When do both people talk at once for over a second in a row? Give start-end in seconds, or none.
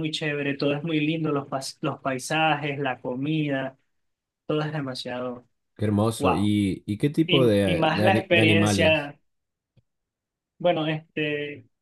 7.3-9.1